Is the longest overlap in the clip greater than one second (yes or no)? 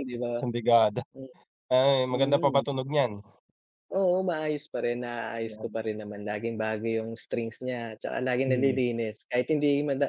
no